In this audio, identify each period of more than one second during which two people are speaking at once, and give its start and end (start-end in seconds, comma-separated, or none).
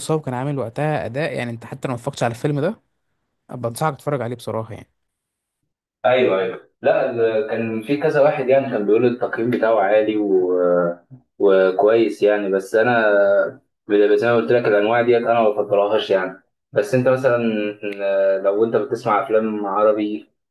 none